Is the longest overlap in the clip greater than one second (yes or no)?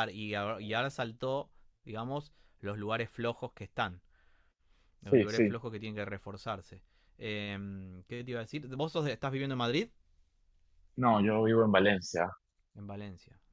no